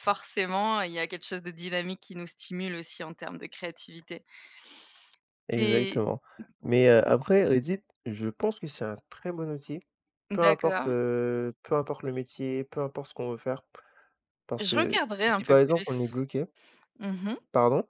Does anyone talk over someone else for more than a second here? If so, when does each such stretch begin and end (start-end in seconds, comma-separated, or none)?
14.6-16.1